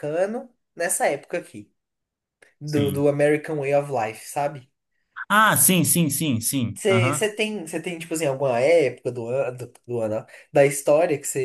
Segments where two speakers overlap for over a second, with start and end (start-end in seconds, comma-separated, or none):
none